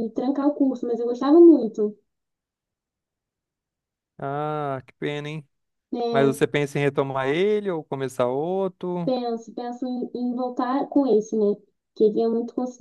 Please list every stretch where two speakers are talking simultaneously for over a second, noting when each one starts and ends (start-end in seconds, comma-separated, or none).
none